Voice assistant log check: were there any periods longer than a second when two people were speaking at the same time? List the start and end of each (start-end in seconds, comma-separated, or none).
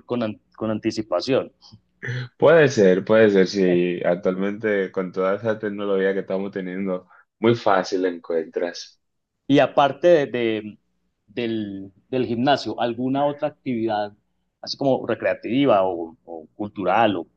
none